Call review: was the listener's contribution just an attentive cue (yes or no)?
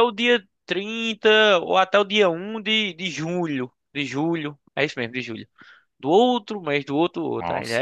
no